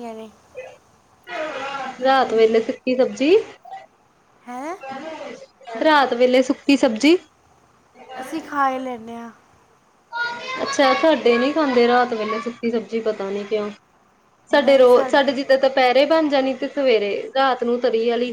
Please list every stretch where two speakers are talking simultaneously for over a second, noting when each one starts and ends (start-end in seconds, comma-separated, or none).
none